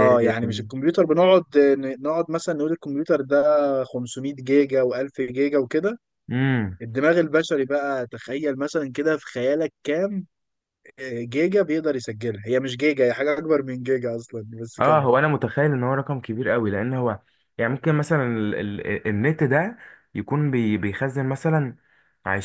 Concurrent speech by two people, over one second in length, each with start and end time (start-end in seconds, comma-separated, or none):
none